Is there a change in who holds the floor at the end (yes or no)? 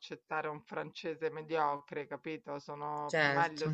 no